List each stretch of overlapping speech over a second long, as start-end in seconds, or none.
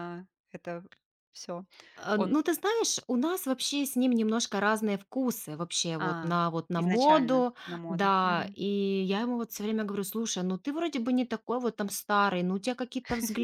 6.0-8.6